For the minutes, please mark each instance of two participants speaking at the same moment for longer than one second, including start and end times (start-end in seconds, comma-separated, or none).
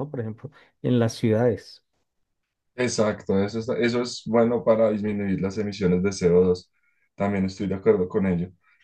none